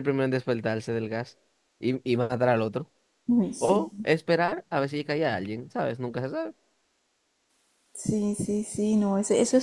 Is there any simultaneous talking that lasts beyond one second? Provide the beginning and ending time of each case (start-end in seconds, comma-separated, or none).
none